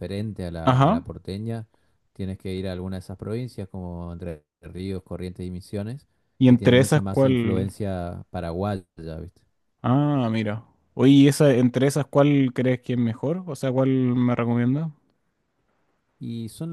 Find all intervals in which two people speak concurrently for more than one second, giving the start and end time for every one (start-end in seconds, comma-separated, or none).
6.4-7.7